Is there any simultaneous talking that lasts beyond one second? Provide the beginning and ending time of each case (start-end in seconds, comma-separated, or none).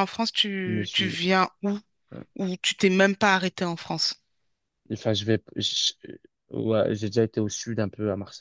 none